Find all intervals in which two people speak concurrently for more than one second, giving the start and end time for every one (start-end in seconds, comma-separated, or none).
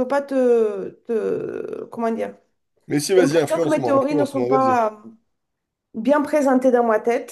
3.2-4.8